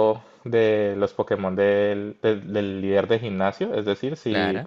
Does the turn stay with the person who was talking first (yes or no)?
yes